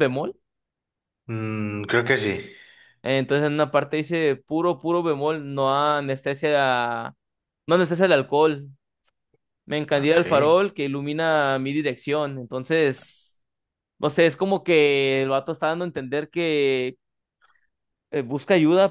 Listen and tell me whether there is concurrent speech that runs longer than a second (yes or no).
no